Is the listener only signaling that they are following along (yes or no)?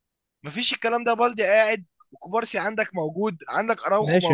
no